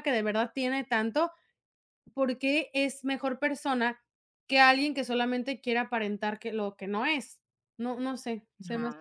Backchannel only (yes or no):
no